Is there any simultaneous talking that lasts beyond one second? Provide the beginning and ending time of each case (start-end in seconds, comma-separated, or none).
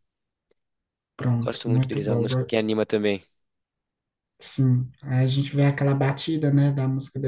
1.3-2.5